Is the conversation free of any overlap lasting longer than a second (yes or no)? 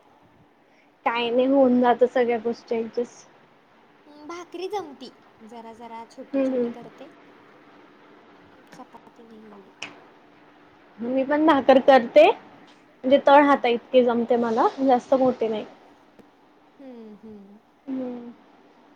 yes